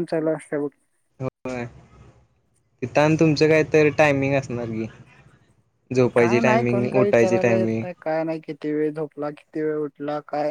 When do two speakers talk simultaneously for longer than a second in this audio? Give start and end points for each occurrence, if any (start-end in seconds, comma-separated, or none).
6.2-7.8